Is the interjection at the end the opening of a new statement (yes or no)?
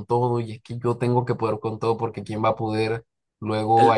no